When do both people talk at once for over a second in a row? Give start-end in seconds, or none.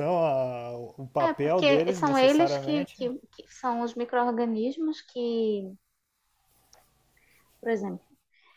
1.2-3.0